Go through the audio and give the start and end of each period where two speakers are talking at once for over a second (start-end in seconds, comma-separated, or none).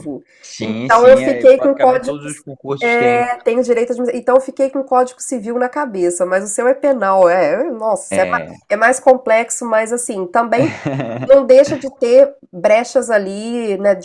0.6-2.2